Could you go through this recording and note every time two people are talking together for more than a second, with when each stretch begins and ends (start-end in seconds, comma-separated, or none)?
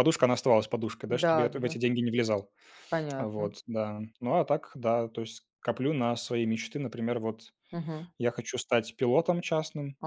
none